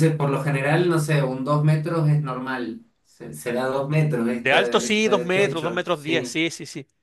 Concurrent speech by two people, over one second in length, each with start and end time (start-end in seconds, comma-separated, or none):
4.4-6.4